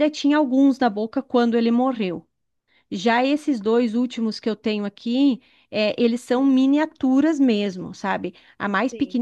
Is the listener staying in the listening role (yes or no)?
yes